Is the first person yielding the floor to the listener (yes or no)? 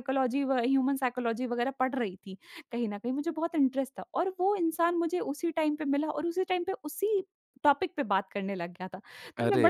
no